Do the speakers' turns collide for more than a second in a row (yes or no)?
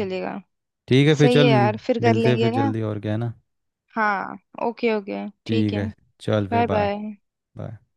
yes